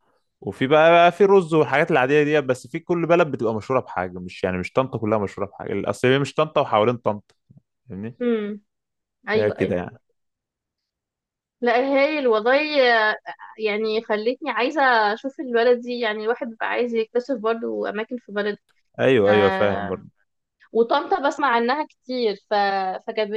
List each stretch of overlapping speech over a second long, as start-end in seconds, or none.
none